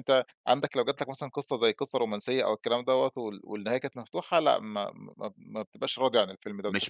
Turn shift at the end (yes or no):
yes